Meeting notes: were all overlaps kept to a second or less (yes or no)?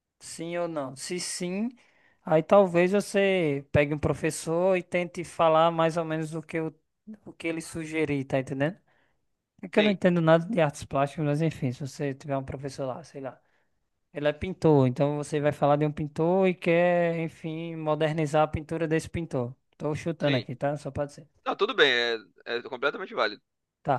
yes